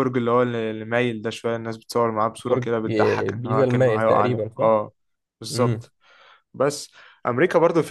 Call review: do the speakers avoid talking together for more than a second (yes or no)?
no